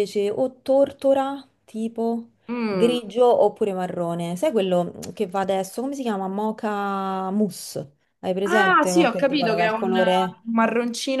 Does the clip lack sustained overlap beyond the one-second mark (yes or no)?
no